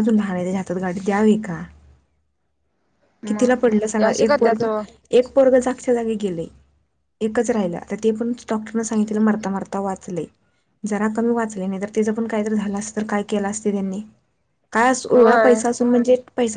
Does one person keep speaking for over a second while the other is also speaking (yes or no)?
yes